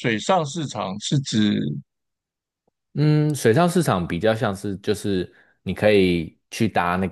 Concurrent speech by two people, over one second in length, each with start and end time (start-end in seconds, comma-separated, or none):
none